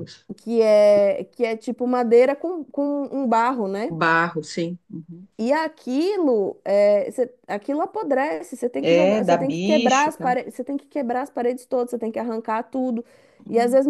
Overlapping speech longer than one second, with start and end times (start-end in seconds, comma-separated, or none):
8.8-10.4